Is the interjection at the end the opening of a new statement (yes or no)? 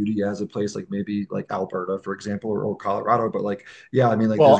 yes